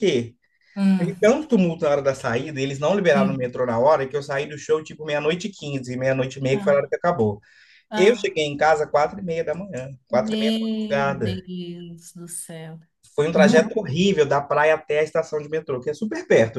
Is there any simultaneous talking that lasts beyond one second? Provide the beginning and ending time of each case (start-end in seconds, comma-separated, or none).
10.1-11.4